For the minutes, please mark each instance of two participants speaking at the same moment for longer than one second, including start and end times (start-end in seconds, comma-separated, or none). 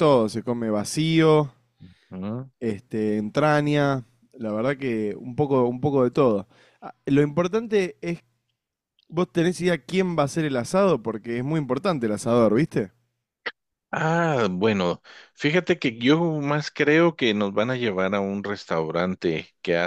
none